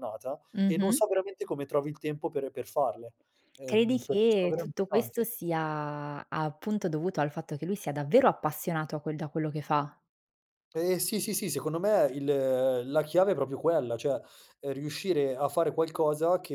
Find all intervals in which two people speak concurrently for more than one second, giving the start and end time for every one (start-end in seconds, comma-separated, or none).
3.7-5.2